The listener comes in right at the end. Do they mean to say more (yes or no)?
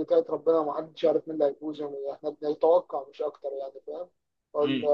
no